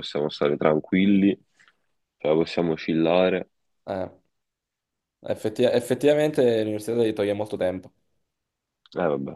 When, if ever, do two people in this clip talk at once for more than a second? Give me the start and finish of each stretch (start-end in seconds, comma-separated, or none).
none